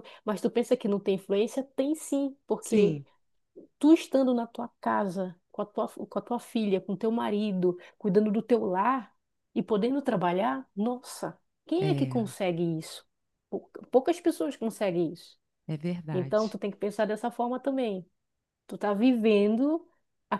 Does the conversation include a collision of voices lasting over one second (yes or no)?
no